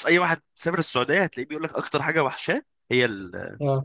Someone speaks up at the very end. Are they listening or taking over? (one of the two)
taking over